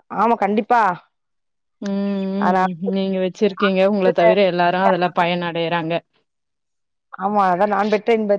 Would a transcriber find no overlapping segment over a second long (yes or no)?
yes